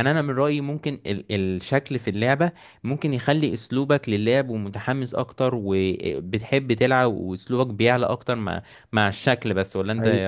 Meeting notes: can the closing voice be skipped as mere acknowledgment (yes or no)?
no